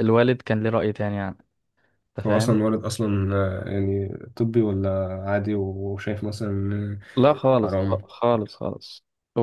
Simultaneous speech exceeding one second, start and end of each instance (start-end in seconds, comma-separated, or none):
none